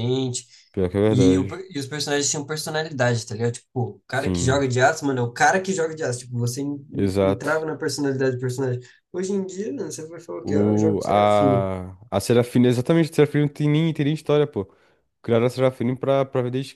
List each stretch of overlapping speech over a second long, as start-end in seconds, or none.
10.4-11.7